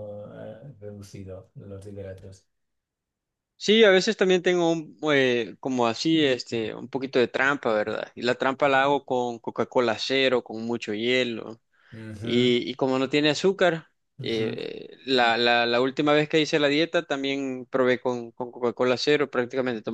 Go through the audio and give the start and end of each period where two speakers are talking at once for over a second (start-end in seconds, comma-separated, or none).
none